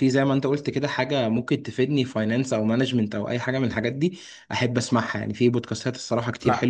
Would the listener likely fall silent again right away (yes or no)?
yes